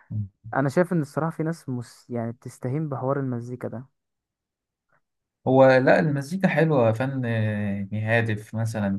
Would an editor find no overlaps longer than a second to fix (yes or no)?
yes